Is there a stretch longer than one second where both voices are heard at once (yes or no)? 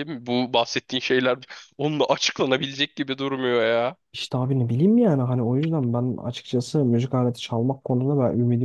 no